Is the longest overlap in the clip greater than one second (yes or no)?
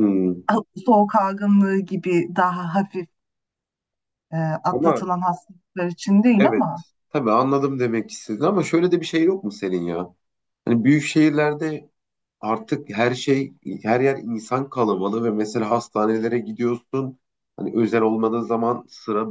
no